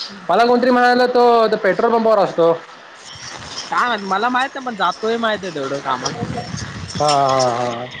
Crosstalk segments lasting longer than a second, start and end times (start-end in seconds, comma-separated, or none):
none